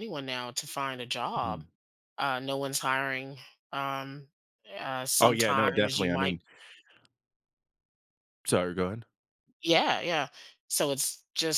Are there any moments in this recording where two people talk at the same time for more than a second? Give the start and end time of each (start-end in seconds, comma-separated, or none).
5.2-6.4